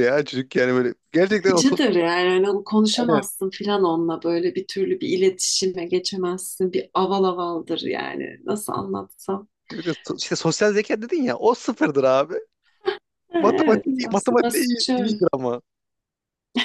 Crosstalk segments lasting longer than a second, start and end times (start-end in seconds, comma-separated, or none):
13.4-15.2